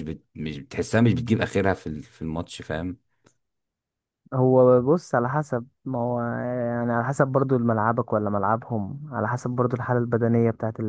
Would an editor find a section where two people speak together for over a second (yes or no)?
no